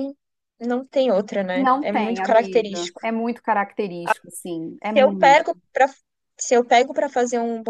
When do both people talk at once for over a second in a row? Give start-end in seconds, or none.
1.5-3.0